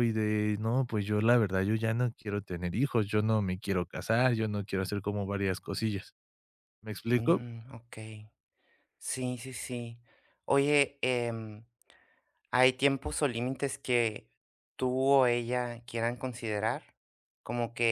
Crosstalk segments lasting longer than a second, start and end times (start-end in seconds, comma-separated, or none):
none